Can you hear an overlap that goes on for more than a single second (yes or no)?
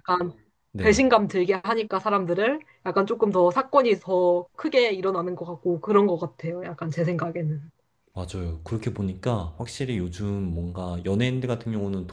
no